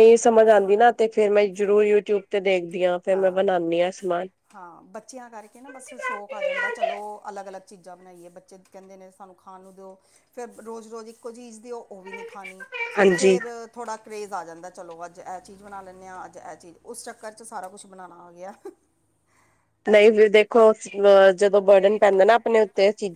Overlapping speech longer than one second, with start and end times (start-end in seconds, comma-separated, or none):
none